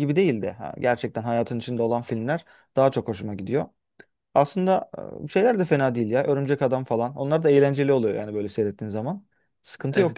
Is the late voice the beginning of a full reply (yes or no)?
yes